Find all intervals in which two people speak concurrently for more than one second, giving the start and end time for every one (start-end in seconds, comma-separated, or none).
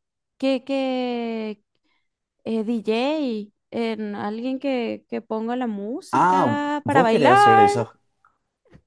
6.1-7.7